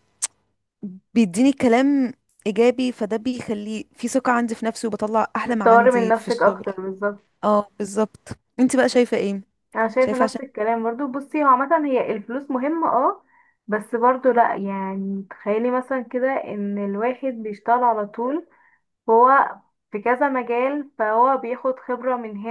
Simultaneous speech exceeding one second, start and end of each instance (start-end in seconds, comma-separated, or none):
5.5-6.7